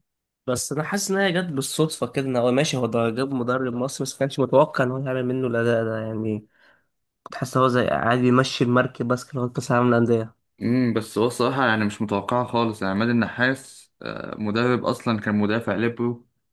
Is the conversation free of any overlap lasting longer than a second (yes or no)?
yes